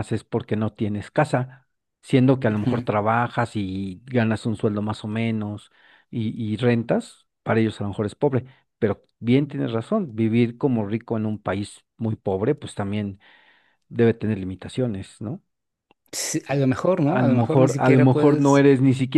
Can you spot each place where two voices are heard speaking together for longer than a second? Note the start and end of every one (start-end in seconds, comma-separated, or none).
17.1-18.6